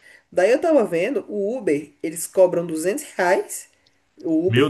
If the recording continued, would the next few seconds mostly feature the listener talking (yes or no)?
no